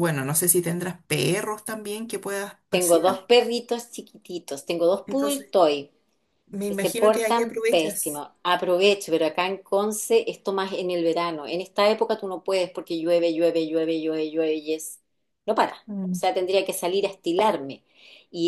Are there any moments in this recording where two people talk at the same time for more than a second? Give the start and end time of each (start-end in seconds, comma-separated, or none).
6.7-8.2